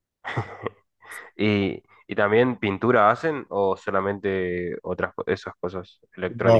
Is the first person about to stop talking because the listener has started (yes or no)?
yes